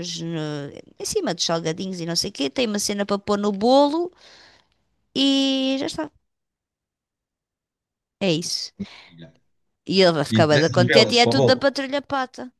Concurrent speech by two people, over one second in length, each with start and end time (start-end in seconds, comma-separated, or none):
10.3-11.7